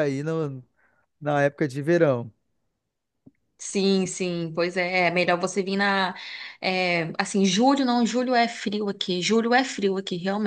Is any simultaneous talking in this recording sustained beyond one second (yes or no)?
no